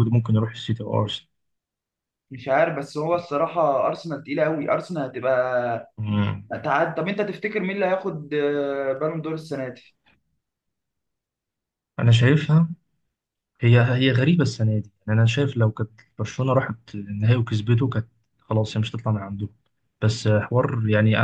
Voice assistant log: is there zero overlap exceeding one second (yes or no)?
yes